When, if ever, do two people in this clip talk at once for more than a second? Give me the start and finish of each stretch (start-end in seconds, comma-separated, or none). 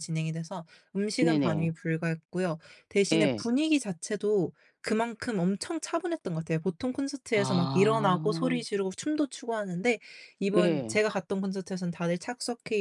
7.3-8.6